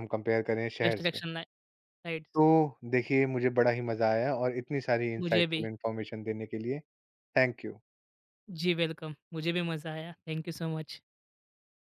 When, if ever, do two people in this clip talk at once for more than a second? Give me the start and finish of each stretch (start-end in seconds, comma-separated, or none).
none